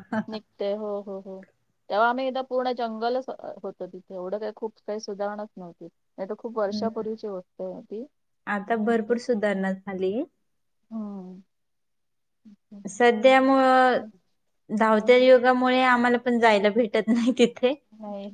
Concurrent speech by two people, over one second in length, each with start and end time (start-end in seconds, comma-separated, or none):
none